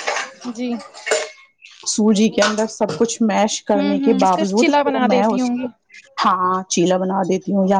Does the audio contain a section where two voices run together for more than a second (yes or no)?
yes